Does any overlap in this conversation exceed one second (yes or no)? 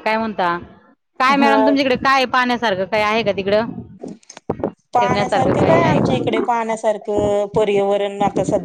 yes